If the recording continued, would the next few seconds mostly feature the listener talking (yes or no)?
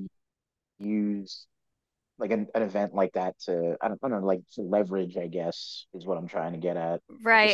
yes